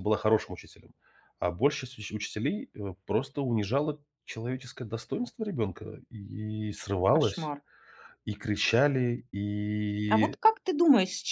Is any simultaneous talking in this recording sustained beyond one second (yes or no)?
no